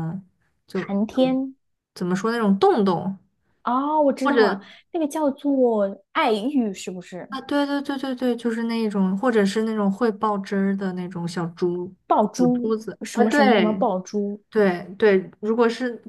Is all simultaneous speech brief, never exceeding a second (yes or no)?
no